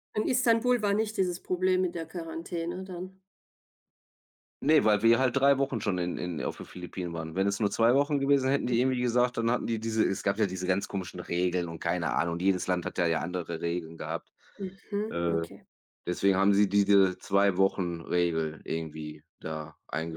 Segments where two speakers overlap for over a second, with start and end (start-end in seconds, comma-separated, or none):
none